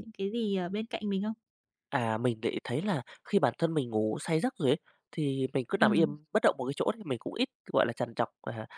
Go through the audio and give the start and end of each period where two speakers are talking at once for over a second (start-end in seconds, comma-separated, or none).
none